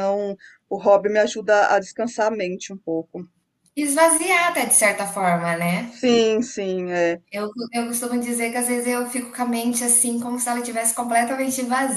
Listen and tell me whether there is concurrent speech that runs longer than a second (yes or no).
no